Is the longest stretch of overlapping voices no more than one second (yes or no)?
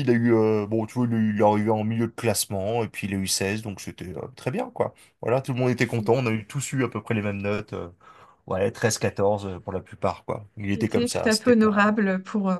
no